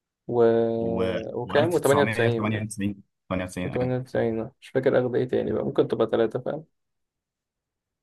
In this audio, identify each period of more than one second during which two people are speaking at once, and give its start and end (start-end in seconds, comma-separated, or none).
1.4-2.6